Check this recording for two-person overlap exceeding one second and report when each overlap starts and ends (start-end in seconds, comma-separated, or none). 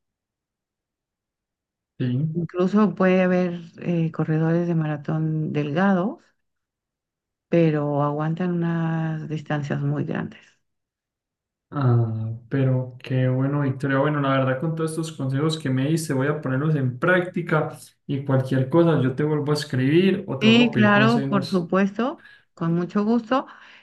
20.4-21.7